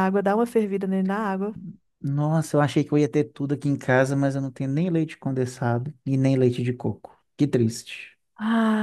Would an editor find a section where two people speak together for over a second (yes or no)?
no